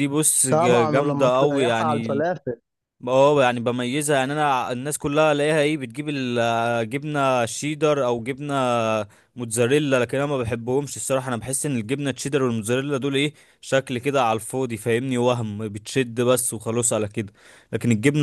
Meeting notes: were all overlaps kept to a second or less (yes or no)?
no